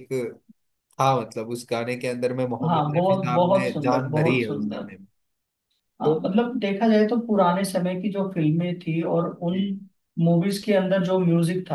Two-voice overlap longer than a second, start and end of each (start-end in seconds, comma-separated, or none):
2.7-4.9